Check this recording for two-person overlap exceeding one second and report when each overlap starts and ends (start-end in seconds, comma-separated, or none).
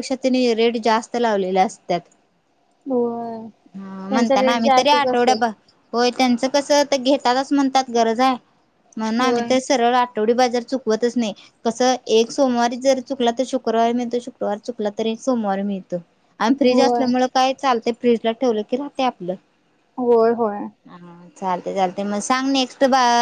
4.1-5.4